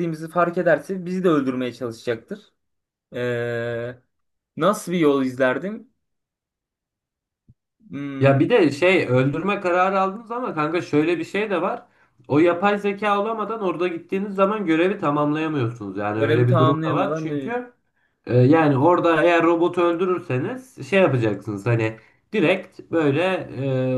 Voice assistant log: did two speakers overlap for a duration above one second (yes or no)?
yes